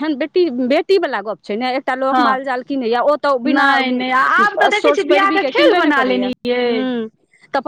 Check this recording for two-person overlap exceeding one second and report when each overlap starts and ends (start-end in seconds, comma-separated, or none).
3.5-6.2